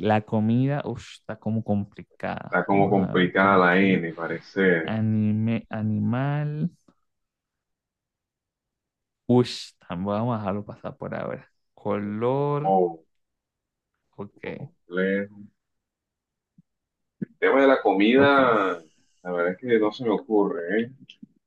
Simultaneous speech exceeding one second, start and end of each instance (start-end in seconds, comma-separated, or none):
2.4-4.0